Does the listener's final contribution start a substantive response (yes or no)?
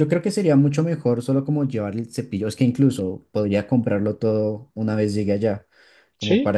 yes